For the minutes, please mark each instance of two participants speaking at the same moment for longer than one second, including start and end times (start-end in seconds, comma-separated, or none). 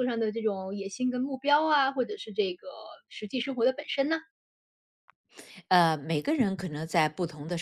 none